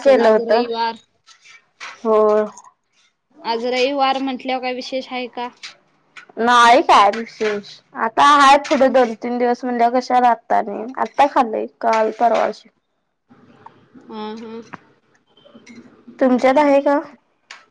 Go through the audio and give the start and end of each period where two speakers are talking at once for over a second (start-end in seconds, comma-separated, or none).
none